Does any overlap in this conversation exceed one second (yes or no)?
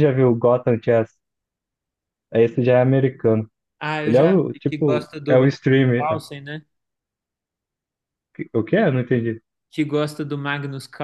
yes